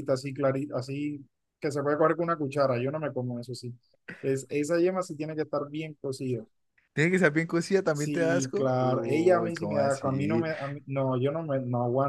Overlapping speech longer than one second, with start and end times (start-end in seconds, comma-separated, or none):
7.9-10.4